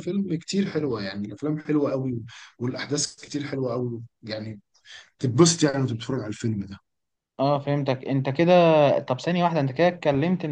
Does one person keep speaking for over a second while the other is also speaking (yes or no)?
no